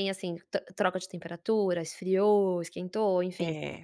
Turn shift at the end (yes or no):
yes